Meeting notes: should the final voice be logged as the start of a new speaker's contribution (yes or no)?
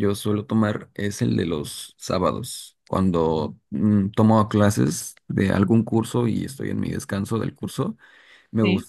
no